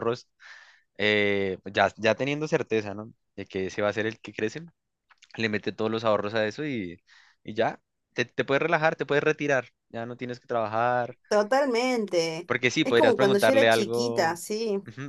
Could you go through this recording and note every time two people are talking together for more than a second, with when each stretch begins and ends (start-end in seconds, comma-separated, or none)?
12.5-14.4